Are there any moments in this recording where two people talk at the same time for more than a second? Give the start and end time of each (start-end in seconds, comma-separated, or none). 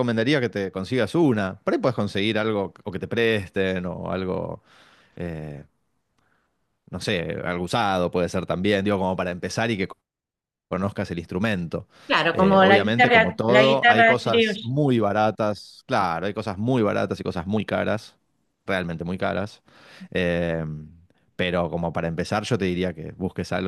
12.3-14.6